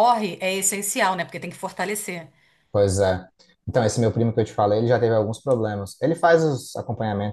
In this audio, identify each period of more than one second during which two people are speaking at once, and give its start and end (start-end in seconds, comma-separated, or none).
none